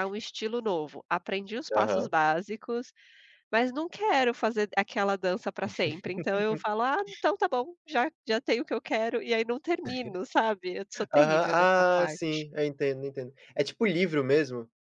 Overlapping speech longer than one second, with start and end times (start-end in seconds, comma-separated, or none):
11.1-12.4